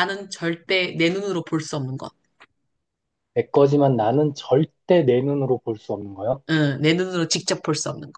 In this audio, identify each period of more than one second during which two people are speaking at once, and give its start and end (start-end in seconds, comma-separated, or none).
none